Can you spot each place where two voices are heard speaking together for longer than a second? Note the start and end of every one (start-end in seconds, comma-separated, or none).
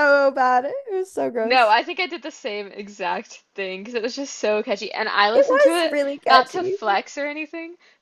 5.3-6.8